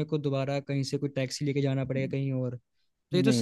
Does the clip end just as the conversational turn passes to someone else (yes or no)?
no